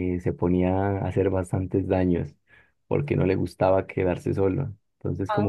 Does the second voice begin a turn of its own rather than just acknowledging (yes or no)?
no